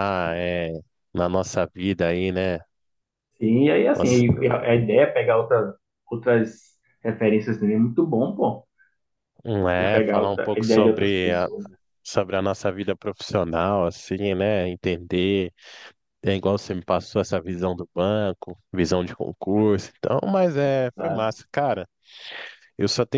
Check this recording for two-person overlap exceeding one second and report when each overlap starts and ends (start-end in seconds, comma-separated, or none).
9.8-11.5